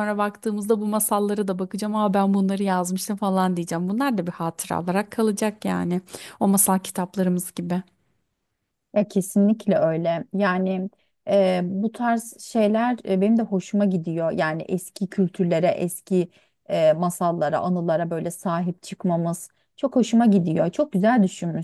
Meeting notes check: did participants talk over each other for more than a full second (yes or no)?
no